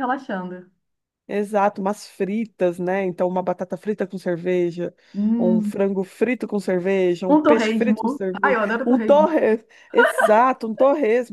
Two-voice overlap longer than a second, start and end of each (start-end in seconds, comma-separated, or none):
7.3-9.3